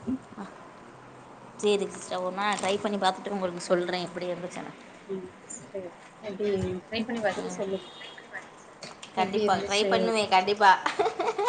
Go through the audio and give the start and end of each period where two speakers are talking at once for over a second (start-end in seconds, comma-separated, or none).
9.2-10.5